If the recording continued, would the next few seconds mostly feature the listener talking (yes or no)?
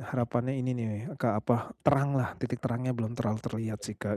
yes